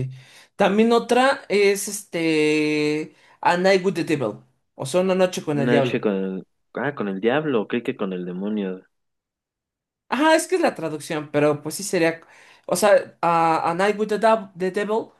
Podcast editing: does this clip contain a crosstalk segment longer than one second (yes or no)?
no